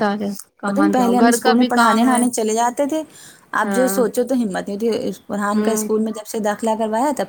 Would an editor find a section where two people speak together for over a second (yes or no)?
yes